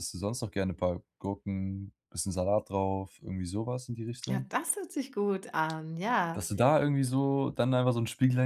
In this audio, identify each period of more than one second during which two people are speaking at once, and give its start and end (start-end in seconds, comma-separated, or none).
none